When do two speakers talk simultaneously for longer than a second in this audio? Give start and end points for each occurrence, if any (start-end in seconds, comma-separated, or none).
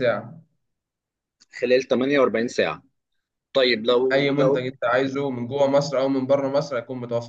none